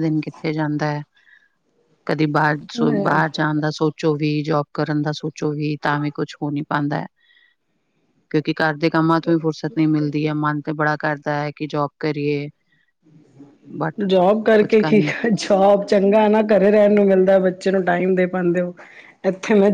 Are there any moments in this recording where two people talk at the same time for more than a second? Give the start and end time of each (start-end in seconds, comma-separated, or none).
none